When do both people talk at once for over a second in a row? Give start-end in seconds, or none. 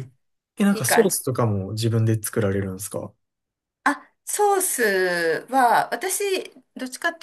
none